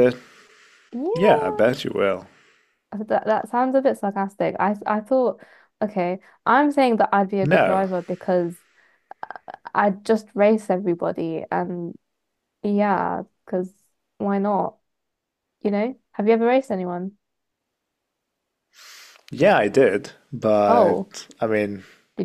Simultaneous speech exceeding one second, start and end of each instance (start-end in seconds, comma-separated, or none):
none